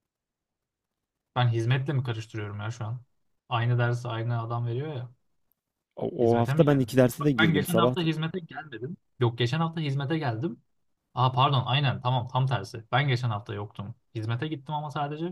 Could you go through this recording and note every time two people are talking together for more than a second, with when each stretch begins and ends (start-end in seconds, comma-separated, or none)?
6.2-8.1